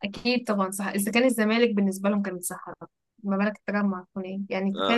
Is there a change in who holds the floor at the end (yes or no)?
no